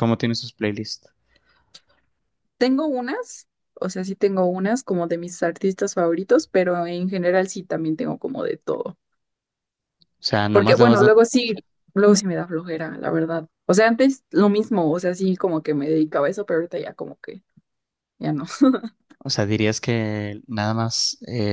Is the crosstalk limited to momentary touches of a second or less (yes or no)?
yes